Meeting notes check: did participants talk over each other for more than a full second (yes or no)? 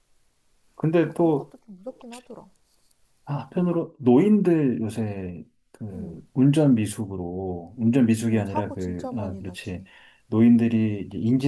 yes